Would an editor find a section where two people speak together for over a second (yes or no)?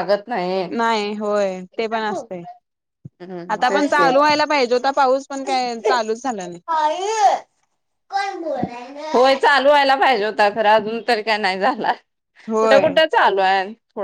no